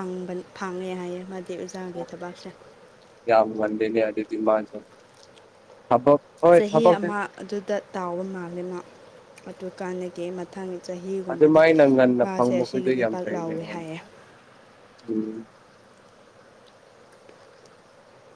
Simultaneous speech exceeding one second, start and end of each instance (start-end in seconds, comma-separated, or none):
12.2-13.9